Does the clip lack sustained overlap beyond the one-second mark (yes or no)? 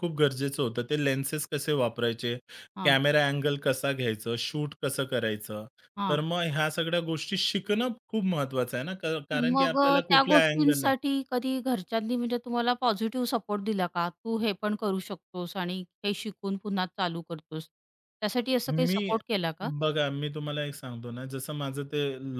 no